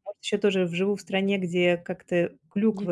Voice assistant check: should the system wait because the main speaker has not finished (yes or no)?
yes